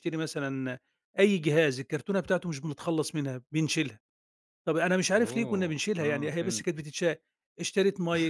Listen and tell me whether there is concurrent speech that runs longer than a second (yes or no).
yes